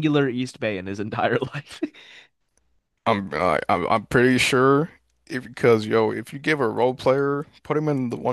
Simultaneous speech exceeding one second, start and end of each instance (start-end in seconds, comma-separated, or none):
none